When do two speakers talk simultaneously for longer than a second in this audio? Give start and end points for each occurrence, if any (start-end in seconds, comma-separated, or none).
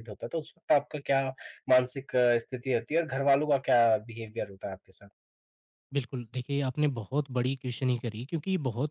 none